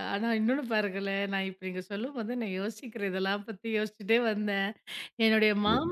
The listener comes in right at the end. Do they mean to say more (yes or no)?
no